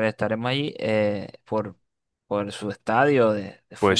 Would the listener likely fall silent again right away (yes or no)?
no